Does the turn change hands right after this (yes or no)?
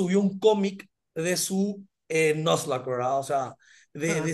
no